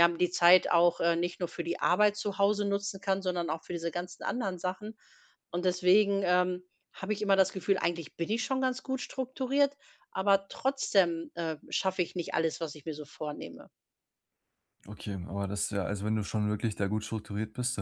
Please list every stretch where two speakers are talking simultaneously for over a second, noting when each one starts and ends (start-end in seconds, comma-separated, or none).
none